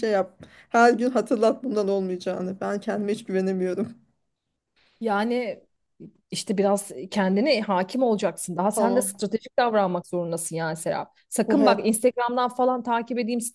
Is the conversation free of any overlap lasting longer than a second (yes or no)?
yes